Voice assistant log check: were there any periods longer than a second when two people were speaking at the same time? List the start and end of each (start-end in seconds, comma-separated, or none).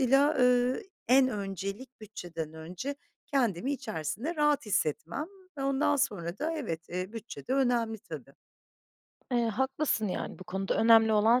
none